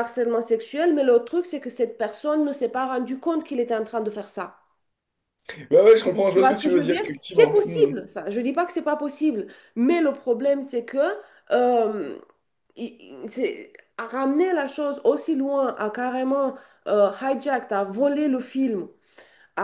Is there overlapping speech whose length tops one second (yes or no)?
yes